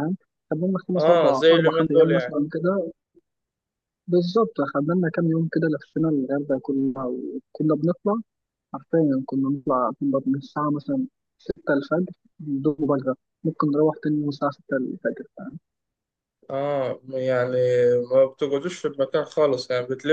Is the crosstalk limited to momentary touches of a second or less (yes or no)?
no